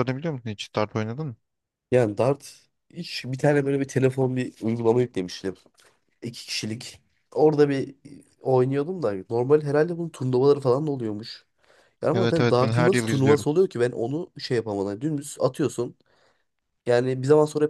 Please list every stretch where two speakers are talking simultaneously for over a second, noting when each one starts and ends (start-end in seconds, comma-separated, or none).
12.1-13.4